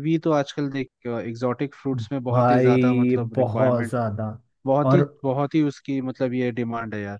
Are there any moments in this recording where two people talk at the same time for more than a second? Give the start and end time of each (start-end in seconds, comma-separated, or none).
2.3-3.9